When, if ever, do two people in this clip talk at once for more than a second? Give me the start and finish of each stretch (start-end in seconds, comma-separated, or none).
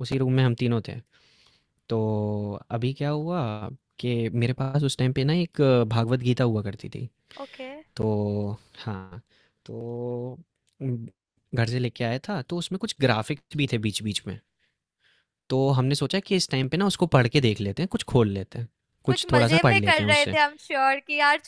19.1-20.4